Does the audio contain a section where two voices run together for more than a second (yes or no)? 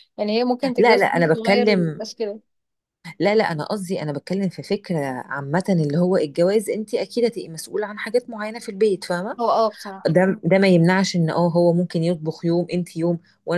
yes